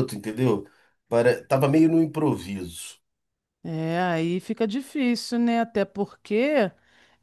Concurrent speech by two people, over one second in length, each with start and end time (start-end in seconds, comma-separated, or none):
none